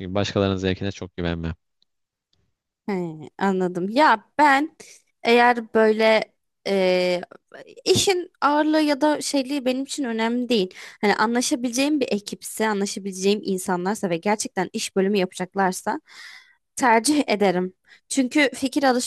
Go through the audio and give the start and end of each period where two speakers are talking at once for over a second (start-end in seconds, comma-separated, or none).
none